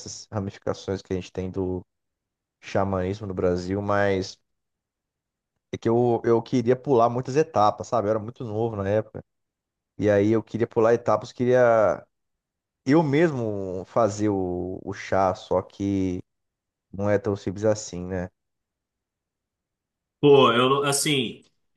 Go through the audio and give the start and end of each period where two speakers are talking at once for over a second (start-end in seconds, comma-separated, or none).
none